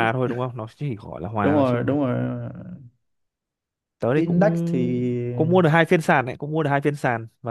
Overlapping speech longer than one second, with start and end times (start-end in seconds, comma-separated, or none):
4.2-5.5